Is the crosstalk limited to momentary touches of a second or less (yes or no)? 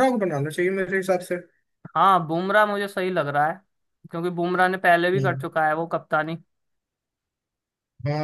yes